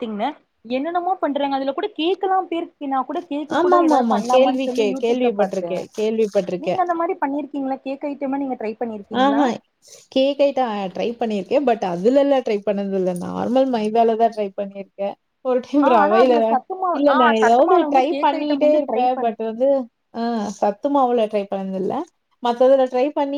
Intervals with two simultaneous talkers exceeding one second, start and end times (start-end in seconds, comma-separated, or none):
3.6-5.8, 17.0-19.3